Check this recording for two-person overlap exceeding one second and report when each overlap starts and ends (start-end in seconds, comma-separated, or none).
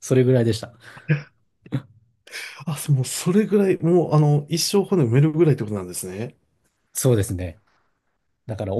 none